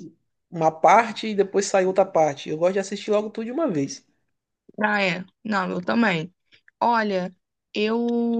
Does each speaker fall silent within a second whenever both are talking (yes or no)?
yes